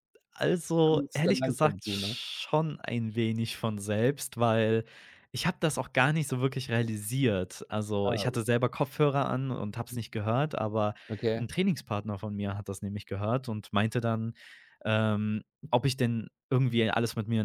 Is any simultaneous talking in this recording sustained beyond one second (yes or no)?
yes